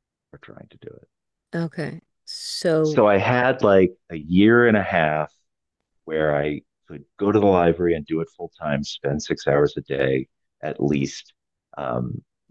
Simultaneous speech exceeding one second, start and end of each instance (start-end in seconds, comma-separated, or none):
none